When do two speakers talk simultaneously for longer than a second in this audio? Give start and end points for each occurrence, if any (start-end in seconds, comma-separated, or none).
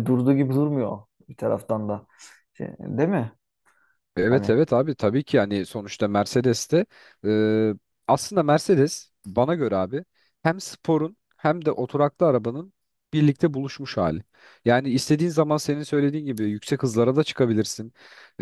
none